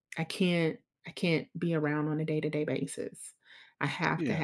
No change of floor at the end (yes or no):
yes